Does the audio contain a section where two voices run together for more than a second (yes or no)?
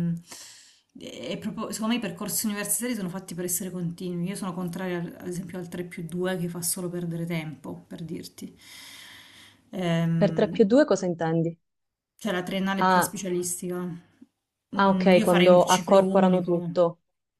yes